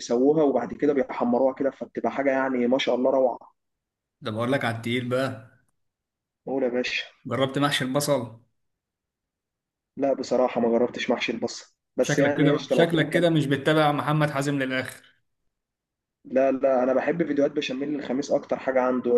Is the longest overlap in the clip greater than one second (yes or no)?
yes